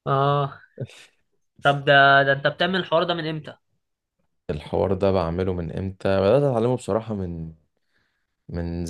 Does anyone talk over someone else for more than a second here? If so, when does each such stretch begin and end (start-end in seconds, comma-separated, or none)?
none